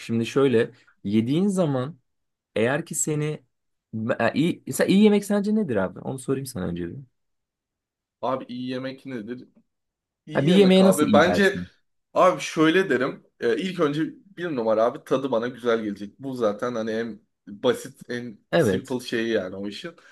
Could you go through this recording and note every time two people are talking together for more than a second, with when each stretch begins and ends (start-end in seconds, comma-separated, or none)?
10.3-11.6